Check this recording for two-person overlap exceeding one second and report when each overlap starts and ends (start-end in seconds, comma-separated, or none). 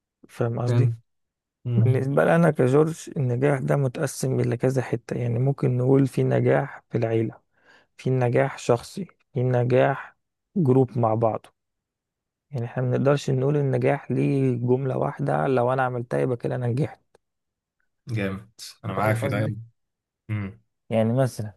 none